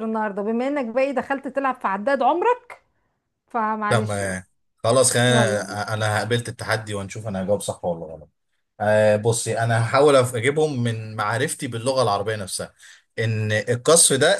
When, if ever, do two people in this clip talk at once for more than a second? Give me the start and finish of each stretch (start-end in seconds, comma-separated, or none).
none